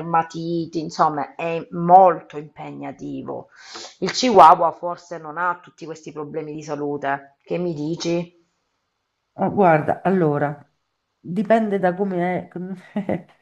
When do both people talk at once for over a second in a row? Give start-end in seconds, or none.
none